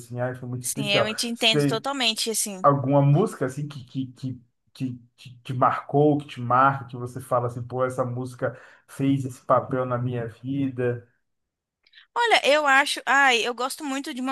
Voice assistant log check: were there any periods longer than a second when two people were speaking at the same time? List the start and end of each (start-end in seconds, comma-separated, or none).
none